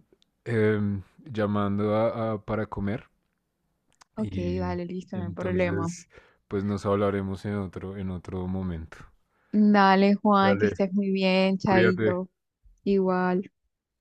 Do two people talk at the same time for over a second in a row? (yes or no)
yes